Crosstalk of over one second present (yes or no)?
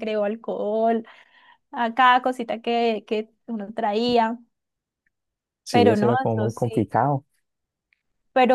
yes